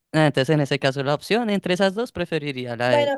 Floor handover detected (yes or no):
yes